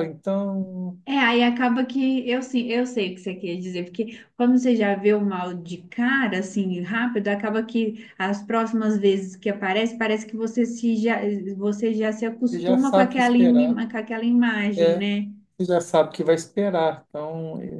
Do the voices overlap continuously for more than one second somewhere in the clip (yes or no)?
yes